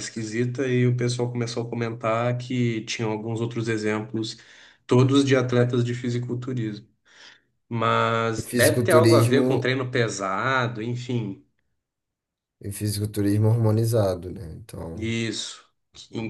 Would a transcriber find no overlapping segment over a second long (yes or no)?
no